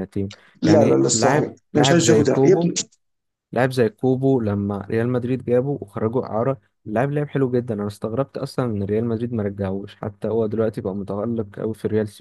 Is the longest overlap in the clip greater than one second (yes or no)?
yes